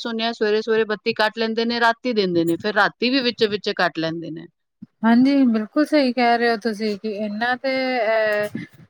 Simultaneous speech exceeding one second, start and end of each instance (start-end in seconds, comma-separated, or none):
none